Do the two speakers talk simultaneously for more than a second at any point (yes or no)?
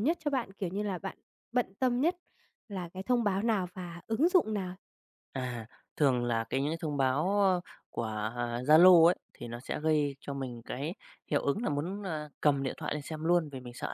no